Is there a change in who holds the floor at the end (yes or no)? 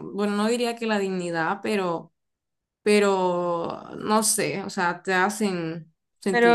yes